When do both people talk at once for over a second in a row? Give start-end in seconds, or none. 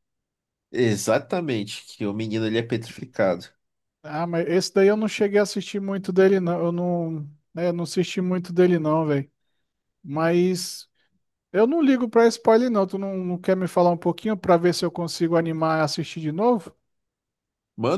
none